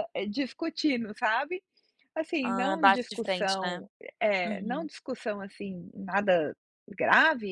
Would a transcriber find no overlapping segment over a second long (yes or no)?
no